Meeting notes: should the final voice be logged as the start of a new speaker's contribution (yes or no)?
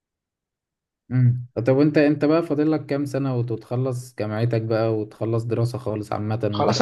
yes